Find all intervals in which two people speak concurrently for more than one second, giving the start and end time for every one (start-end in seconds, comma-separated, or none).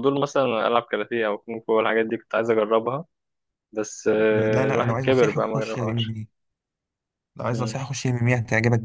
4.3-6.2